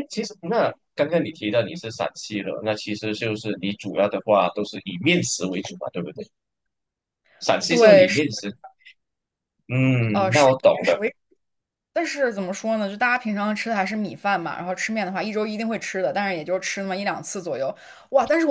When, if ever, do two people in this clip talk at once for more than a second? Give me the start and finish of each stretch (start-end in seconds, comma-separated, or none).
none